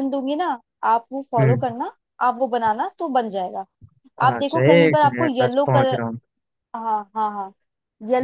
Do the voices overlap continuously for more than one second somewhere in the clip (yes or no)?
yes